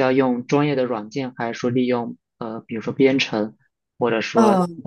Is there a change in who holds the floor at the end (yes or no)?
yes